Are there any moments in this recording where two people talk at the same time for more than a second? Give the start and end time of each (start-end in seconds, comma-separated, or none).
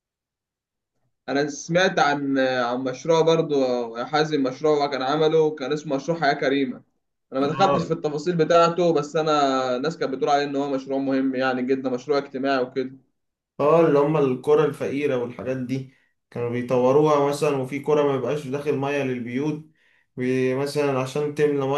none